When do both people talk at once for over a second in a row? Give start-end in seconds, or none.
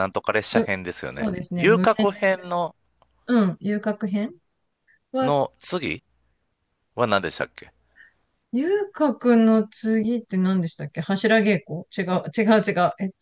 0.6-2.4